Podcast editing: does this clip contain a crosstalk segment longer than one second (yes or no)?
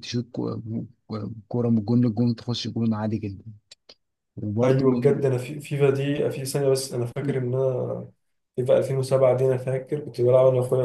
no